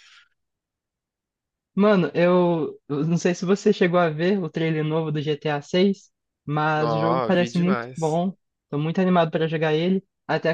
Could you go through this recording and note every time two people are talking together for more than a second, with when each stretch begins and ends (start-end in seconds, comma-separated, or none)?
6.7-8.2